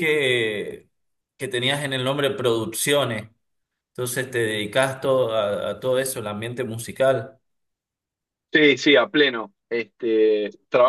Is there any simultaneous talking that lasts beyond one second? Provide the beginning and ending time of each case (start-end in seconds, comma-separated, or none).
none